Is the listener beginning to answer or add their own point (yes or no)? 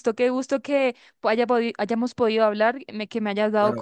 yes